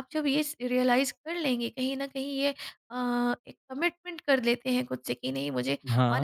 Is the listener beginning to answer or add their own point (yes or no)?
no